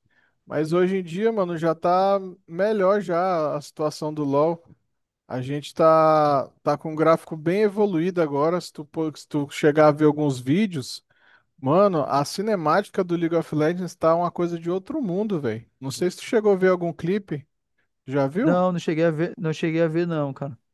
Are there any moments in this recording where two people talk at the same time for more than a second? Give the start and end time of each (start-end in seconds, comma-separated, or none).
none